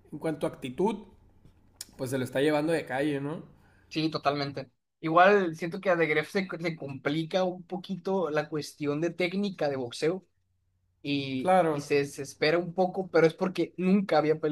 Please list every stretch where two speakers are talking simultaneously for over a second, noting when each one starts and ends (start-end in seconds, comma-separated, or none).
none